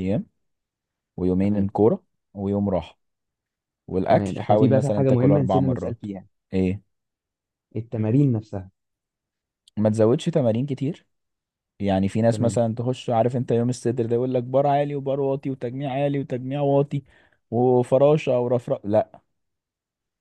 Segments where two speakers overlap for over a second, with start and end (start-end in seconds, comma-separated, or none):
4.1-6.1